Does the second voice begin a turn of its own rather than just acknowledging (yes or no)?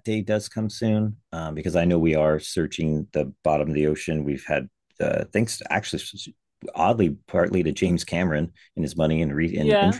yes